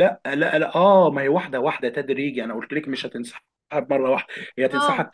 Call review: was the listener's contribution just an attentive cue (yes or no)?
yes